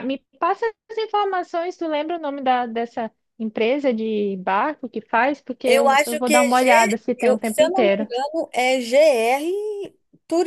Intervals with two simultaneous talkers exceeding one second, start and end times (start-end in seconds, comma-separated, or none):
5.6-8.1